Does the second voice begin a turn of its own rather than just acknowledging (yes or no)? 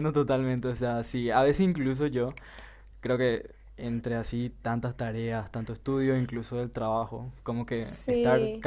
no